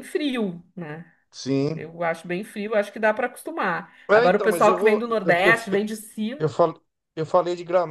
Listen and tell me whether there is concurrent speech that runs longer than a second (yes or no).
yes